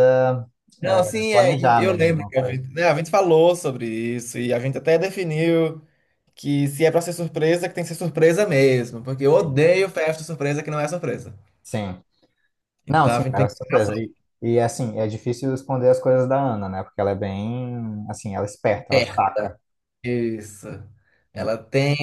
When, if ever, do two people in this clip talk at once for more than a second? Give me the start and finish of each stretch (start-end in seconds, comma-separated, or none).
0.9-2.6